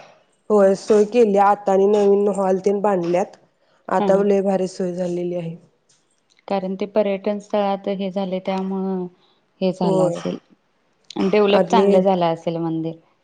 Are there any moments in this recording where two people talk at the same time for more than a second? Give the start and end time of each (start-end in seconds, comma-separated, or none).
none